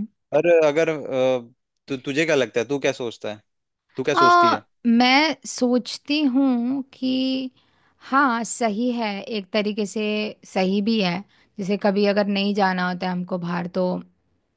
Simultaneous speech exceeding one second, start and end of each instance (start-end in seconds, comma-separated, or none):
none